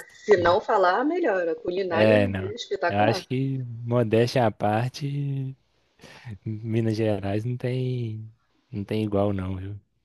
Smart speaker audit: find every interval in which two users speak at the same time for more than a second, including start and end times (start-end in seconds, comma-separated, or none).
1.9-3.2